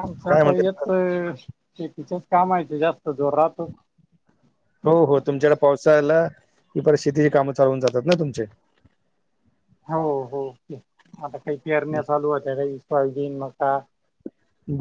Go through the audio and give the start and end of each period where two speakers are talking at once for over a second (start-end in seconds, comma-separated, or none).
none